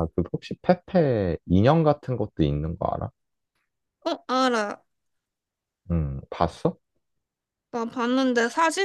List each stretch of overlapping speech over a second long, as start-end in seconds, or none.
none